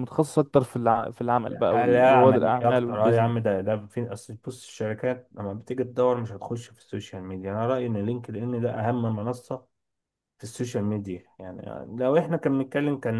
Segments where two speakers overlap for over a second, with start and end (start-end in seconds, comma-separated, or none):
1.6-3.3